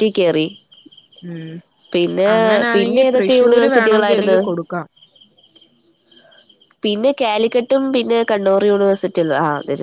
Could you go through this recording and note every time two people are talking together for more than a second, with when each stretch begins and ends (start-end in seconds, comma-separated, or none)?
2.7-4.4